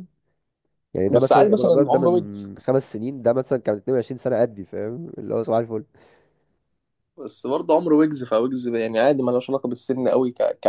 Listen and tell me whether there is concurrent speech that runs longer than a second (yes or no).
yes